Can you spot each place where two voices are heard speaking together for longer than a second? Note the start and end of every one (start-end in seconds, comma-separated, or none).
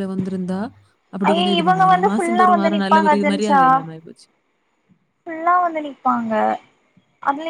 1.3-3.6